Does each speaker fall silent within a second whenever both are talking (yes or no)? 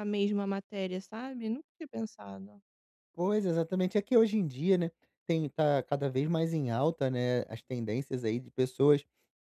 yes